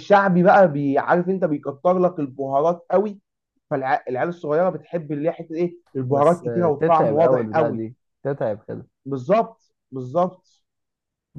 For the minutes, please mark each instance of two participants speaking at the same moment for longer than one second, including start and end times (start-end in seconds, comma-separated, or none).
6.1-7.8